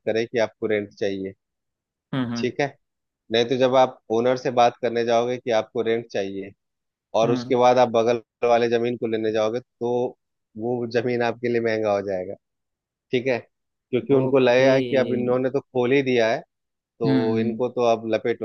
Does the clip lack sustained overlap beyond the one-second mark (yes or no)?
no